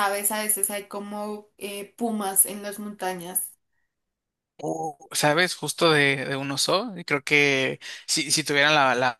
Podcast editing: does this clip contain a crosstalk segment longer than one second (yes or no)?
no